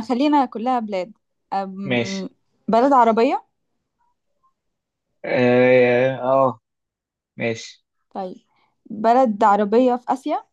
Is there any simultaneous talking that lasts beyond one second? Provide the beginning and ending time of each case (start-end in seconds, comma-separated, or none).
none